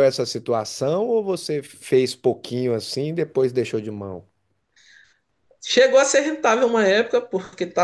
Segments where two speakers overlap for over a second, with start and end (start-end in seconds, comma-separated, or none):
none